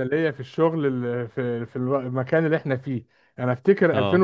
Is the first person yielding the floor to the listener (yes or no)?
no